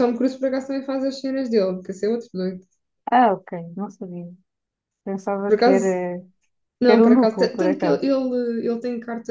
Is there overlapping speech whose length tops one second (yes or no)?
yes